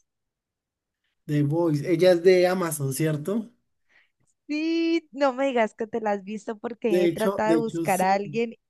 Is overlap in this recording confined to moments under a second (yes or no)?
no